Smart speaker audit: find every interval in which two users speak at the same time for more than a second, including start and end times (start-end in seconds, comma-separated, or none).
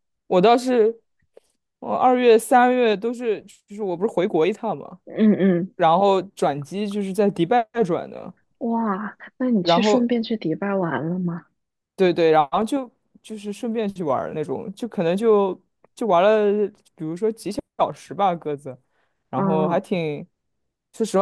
none